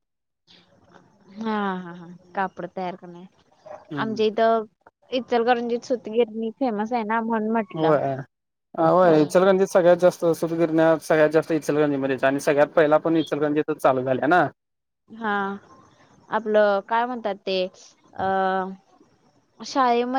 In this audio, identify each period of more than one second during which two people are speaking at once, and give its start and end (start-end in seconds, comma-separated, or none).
none